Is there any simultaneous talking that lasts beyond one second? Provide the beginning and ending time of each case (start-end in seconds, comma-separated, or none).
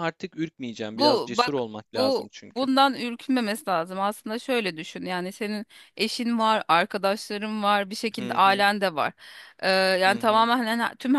0.9-2.7